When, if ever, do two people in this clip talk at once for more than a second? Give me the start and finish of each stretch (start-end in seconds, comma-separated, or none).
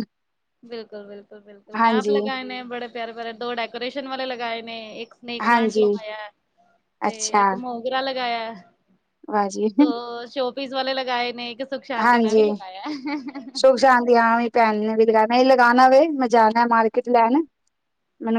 none